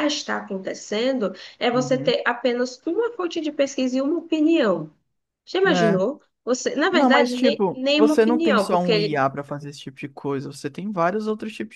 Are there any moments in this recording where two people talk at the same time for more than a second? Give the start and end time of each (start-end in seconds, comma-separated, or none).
6.9-9.3